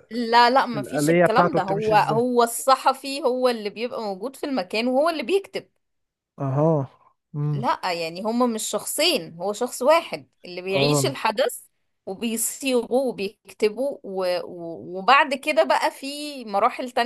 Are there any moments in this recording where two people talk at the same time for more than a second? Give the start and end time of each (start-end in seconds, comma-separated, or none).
0.7-2.2